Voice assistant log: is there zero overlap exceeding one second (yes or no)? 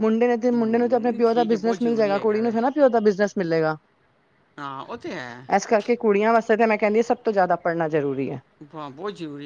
no